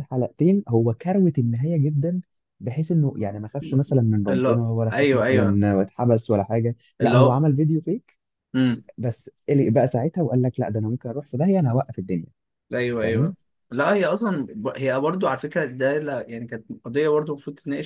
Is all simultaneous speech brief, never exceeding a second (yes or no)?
no